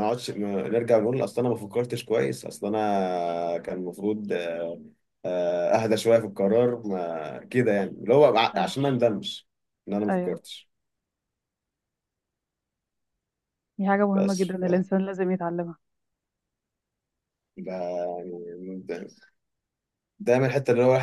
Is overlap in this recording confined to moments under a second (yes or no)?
yes